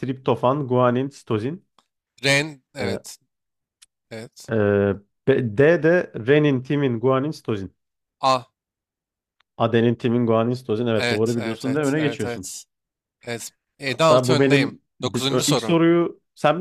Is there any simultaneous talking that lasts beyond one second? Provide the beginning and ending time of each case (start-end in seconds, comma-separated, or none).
10.9-12.5, 13.9-15.8